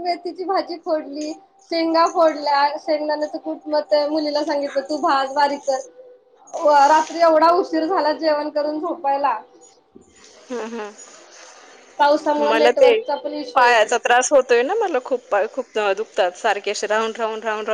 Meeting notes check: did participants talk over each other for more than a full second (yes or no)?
no